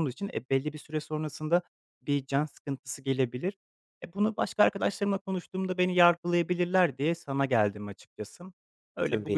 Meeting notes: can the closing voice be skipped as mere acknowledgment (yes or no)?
yes